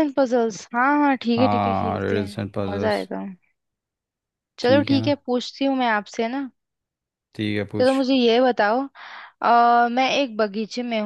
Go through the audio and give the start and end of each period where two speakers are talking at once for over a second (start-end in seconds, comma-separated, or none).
1.4-3.1